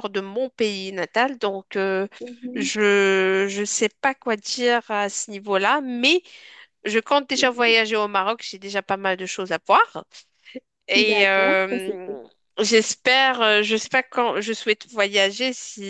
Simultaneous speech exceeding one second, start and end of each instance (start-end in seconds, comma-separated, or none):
11.0-12.2